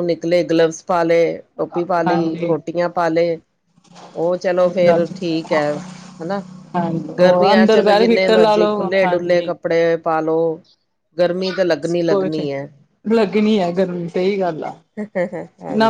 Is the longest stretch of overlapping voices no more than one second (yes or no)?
yes